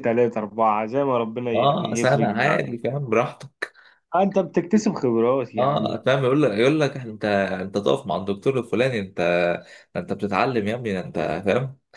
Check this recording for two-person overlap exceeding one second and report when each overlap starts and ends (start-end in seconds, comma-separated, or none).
1.5-2.8